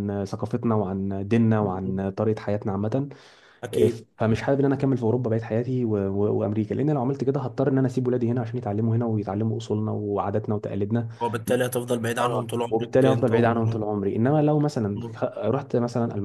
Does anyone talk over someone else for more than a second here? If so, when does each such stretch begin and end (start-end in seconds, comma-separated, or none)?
12.2-13.9